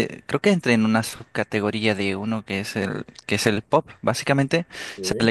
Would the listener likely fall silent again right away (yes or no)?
yes